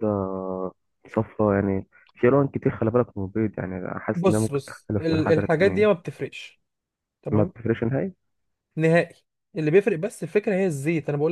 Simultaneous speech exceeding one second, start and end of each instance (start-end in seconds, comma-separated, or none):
4.2-6.0